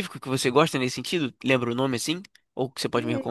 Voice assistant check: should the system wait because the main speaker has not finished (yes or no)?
no